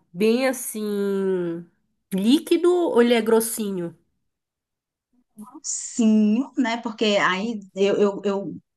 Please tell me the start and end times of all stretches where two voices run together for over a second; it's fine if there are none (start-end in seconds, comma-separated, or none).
none